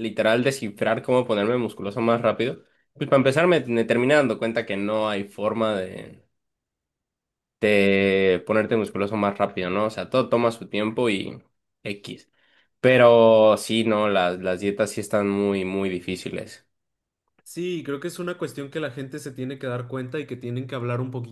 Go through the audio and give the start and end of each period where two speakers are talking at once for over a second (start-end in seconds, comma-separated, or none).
none